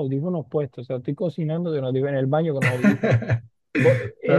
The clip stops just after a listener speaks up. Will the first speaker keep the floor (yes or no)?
yes